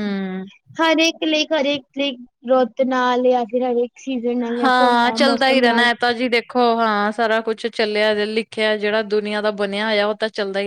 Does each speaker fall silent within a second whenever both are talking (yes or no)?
yes